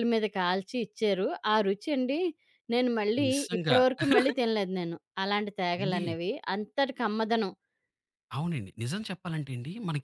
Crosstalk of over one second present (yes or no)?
no